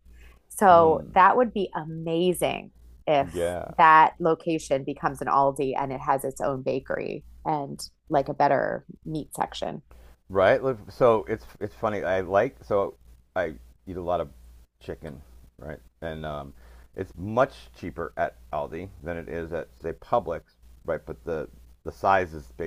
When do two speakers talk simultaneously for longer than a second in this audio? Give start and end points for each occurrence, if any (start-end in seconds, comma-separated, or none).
none